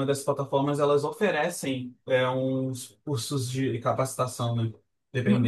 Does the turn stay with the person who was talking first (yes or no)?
no